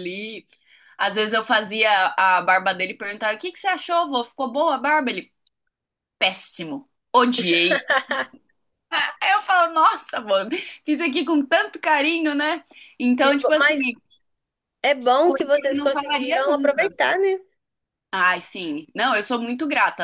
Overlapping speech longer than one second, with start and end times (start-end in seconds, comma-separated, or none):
15.2-16.9